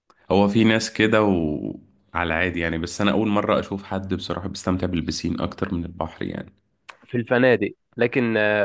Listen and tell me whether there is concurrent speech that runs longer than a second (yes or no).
no